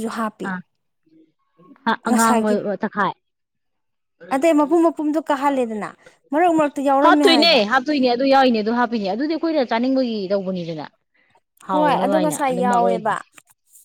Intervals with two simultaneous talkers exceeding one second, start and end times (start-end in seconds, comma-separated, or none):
11.7-13.1